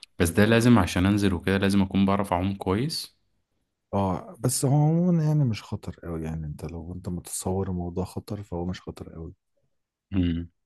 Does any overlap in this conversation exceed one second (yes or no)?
no